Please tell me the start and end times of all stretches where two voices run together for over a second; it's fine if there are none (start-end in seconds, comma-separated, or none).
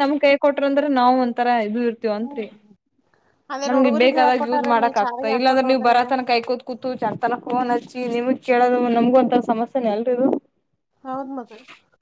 3.7-6.0